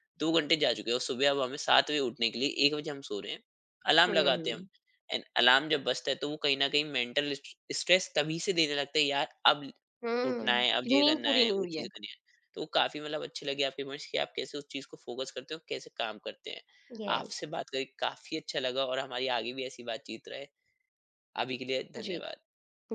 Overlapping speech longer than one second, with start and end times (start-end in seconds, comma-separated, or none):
10.2-11.8